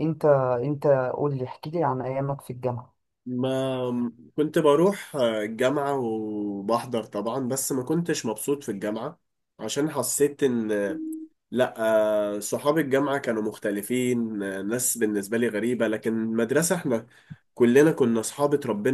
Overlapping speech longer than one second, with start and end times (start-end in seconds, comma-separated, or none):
none